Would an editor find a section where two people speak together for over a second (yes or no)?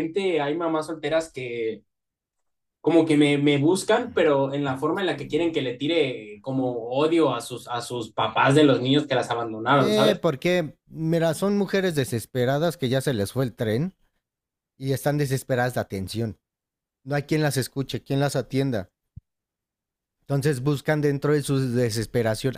no